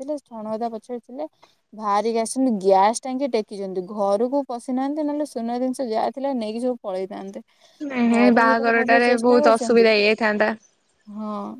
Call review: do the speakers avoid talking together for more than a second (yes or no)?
no